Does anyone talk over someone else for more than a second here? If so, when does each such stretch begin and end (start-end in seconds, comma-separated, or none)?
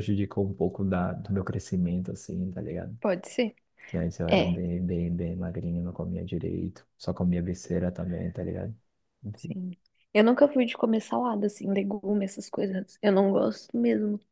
none